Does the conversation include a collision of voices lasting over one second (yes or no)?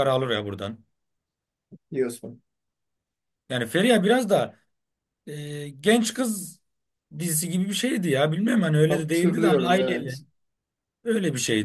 yes